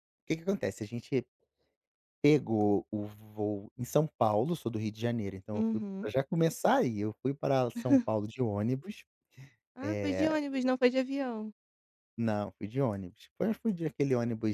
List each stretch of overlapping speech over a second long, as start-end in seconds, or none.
none